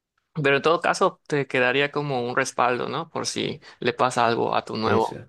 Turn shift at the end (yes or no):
no